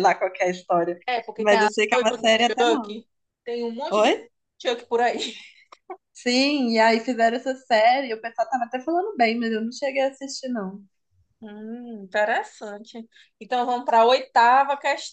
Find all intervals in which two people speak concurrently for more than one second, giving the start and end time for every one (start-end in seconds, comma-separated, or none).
1.4-3.0